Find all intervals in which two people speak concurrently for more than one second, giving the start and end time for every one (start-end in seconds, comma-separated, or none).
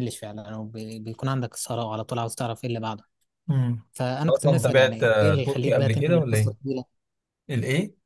4.3-6.5